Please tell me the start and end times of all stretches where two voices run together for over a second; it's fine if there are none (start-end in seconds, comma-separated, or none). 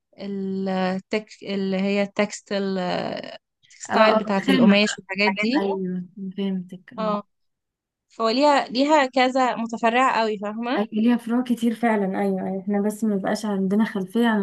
3.9-5.6